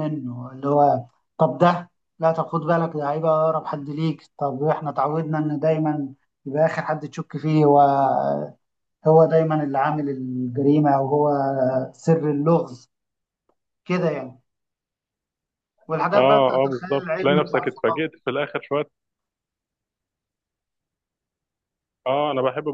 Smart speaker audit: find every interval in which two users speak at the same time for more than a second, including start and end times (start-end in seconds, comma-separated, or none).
16.1-18.1